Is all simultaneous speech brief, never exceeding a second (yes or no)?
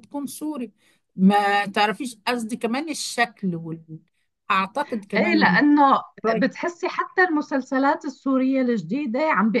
yes